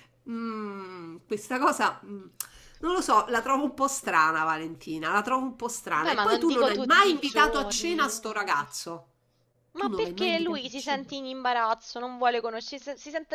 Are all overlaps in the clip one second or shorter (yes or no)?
no